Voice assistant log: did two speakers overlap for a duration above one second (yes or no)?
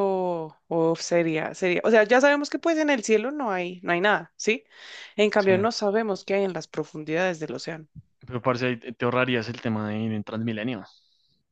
no